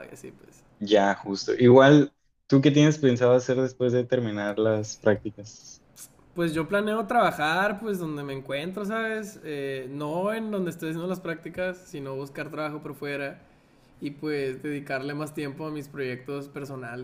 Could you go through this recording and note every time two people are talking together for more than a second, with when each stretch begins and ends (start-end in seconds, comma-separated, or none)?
none